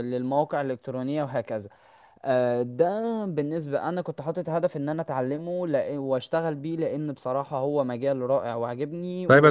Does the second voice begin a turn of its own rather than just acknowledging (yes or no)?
yes